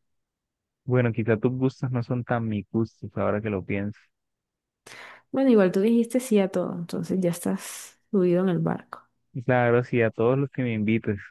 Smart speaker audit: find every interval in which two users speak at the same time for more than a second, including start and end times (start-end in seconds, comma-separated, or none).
none